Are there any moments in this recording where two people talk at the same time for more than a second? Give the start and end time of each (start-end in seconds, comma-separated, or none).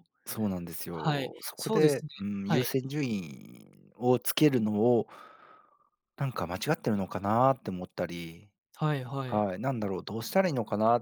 0.9-2.7